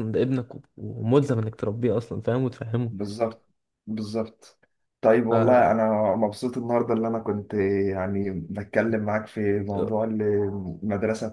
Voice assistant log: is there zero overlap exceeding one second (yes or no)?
yes